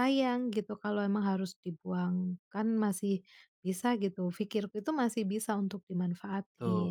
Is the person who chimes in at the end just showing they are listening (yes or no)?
no